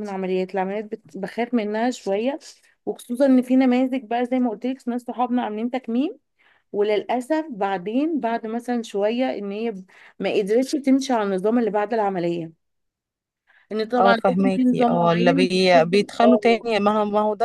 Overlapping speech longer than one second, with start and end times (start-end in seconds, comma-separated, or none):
14.0-16.6